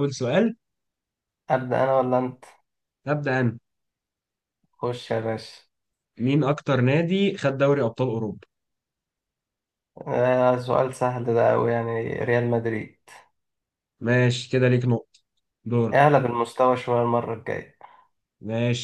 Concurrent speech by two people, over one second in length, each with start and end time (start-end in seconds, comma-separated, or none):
none